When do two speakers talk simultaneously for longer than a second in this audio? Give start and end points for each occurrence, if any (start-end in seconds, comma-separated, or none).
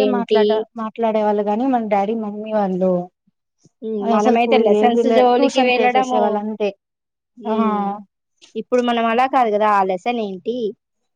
4.2-6.2